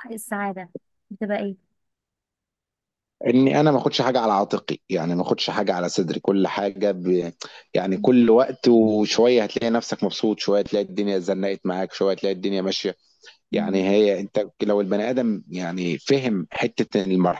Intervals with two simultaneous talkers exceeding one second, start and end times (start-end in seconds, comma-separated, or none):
none